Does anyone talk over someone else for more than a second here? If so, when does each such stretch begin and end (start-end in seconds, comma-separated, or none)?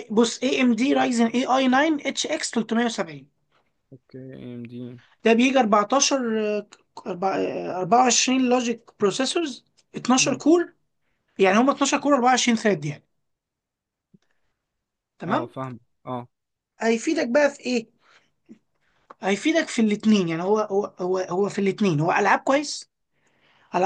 none